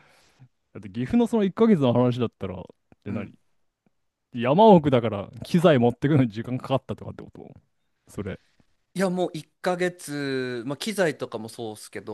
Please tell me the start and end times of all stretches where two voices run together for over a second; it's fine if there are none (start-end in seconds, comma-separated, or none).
none